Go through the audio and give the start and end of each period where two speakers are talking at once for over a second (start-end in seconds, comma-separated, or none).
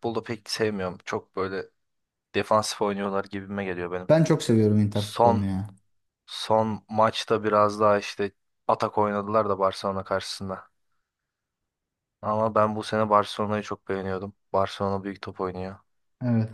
none